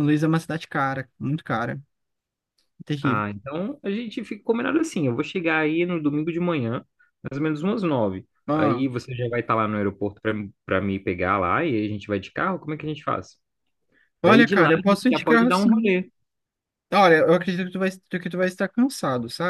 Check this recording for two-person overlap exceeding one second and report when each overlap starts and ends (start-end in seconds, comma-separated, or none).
14.2-15.9